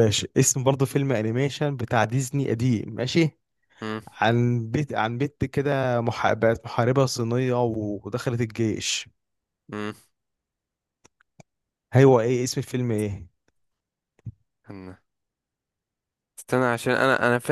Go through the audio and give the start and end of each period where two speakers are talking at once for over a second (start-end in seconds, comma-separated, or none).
none